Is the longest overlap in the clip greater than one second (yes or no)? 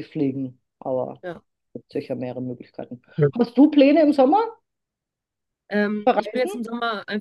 no